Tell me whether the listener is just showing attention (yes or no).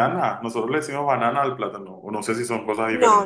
no